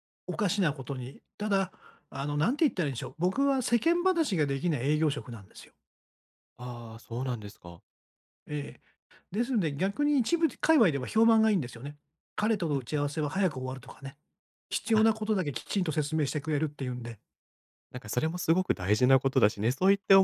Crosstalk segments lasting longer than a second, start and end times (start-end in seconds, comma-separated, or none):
none